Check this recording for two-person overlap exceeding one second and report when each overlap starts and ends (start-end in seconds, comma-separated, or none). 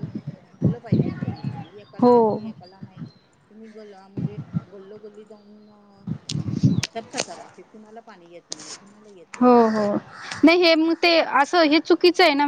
none